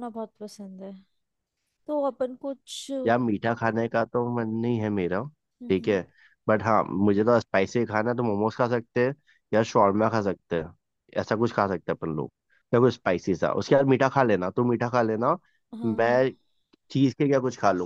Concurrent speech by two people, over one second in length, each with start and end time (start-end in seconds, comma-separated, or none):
none